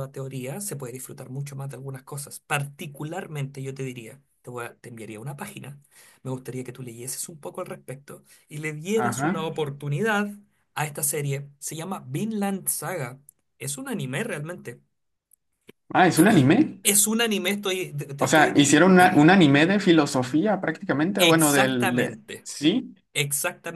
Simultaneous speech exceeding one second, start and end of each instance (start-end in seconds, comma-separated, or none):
21.2-22.5